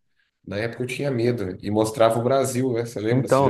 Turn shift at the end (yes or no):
yes